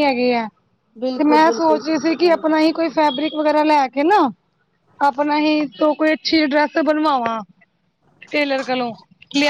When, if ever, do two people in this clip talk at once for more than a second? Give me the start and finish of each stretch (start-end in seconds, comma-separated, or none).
1.2-2.6